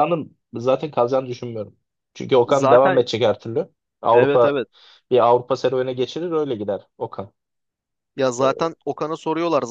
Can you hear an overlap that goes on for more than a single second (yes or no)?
no